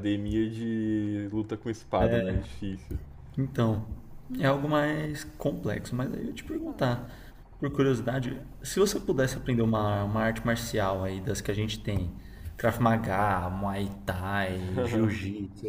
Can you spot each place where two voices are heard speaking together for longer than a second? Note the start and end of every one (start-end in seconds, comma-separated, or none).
none